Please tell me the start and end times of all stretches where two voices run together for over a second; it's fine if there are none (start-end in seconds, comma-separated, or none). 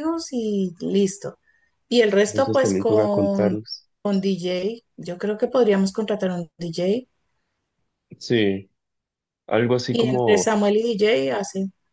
2.3-3.6